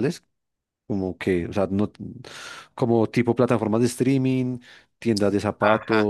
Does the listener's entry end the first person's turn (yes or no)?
no